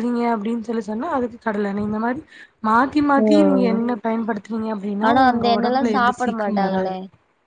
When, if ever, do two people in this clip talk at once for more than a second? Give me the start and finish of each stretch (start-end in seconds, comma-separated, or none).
5.1-6.9